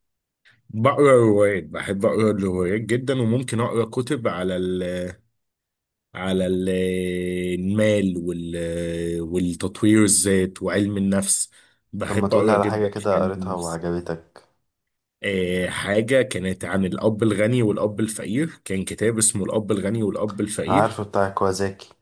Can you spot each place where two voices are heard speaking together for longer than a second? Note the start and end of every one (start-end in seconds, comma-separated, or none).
12.1-13.8